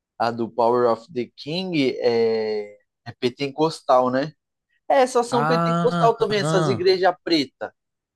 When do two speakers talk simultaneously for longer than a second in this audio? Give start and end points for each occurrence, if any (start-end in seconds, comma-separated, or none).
5.3-6.9